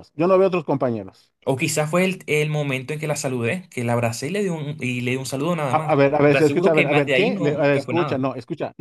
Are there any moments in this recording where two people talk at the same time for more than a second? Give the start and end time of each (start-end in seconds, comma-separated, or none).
5.7-8.2